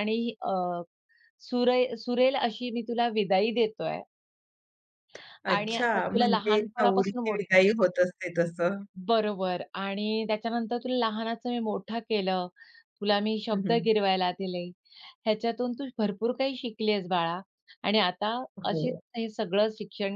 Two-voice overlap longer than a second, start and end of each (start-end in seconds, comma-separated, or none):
5.6-7.6